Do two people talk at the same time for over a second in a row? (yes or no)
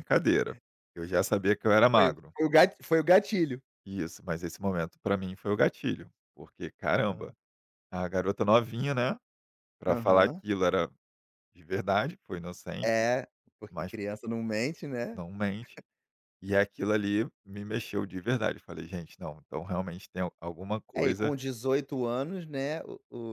no